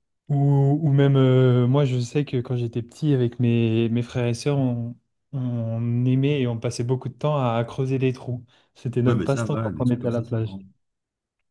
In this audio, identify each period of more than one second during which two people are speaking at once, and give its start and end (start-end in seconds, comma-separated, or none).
9.0-10.6